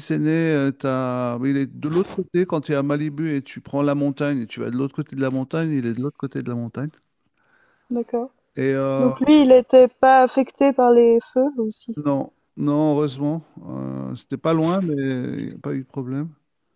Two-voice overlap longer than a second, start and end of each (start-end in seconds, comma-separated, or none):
none